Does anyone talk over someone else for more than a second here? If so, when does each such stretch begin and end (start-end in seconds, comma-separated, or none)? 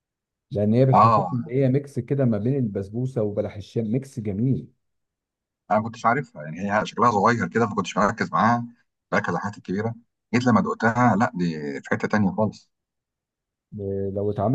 none